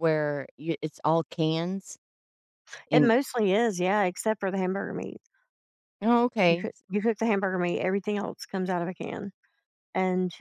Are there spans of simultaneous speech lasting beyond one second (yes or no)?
no